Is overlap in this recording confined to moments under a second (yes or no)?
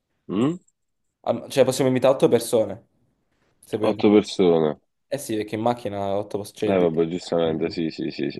yes